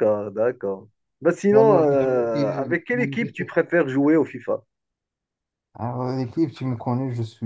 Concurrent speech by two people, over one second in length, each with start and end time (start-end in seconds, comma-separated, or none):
1.5-3.5